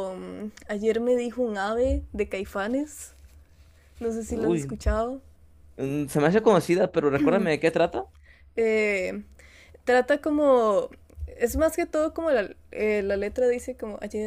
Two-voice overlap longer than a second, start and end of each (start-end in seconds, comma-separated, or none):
none